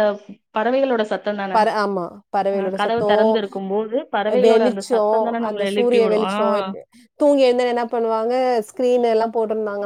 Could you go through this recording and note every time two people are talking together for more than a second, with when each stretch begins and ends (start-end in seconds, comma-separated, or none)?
4.4-6.3